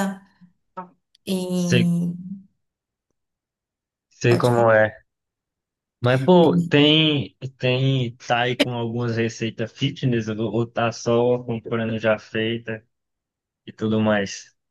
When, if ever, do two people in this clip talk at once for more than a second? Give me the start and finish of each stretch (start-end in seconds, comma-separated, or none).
none